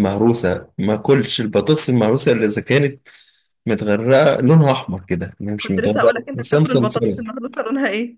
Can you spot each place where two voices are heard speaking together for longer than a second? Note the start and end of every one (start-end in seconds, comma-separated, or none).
5.6-7.2